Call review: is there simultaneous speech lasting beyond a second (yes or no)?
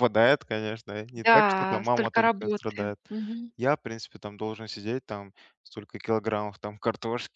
yes